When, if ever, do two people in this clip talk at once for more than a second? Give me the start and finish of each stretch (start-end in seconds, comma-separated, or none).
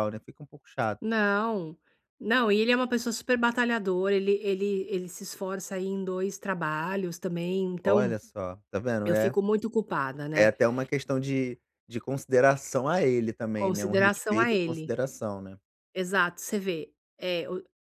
13.5-14.9